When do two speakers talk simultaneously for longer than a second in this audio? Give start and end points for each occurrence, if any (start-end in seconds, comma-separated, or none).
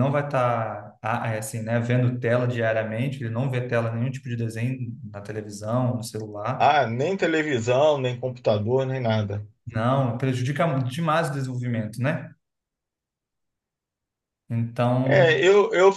none